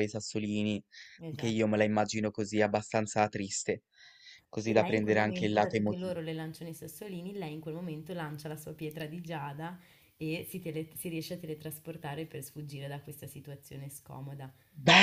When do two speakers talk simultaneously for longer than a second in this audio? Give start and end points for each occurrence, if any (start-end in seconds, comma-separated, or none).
4.6-6.1